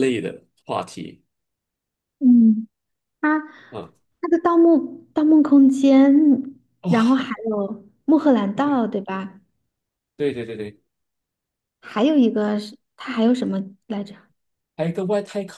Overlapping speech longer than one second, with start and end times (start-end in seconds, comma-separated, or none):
none